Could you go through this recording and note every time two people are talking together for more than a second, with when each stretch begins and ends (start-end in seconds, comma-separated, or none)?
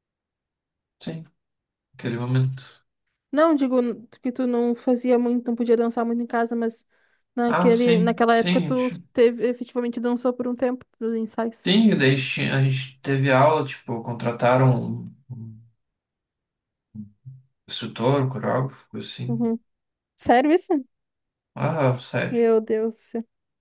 7.5-9.1